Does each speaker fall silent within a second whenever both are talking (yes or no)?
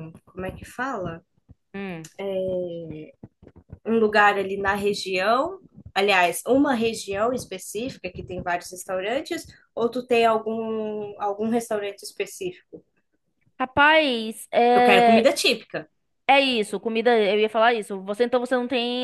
yes